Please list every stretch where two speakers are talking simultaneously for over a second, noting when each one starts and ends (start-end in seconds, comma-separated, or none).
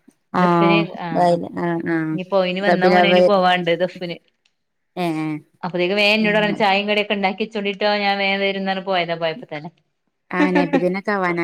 none